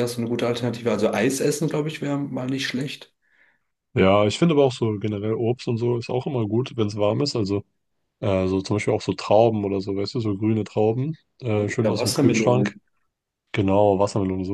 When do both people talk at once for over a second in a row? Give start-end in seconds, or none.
11.5-12.8